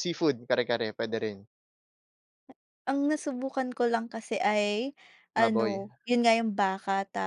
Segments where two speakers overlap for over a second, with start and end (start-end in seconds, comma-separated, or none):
none